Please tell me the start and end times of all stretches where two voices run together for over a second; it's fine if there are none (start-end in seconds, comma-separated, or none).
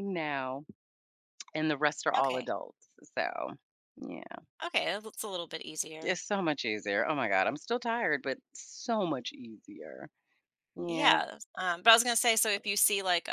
none